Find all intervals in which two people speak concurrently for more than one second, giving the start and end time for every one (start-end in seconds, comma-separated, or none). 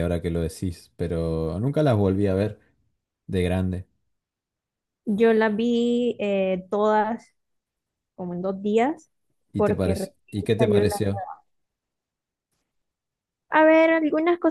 9.6-11.0